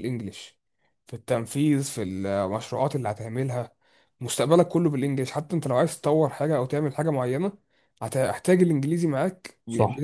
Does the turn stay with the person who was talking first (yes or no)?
no